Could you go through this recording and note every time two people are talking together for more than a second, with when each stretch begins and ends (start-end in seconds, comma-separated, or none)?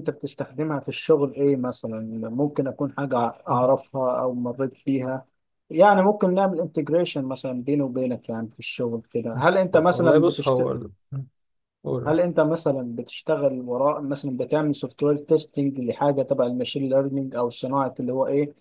9.3-10.7